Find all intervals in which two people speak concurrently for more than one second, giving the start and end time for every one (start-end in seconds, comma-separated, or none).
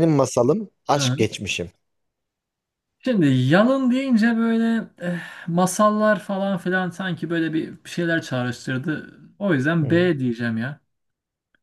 none